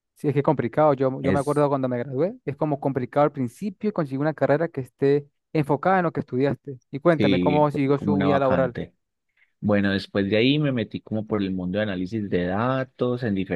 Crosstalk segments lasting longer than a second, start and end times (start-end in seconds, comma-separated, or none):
7.2-8.8